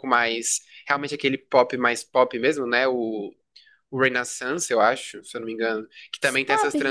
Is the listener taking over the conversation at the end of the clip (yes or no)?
no